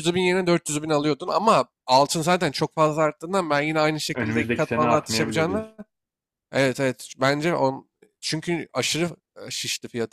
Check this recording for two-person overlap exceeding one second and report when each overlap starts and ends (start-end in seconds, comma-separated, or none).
4.1-5.8